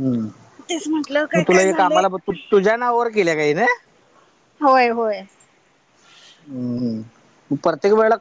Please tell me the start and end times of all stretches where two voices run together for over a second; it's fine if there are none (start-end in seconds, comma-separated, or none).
0.7-2.0